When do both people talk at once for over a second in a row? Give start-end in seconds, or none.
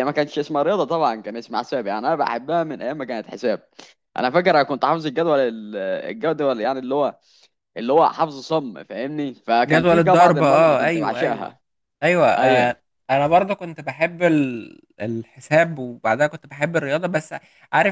9.7-11.6